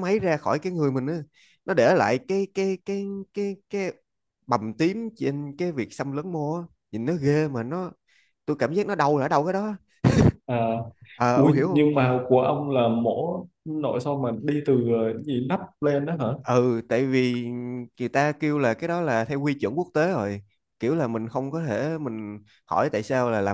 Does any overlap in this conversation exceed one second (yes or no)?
no